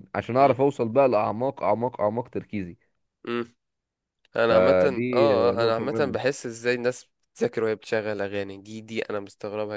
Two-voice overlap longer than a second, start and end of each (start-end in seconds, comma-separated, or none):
4.5-6.2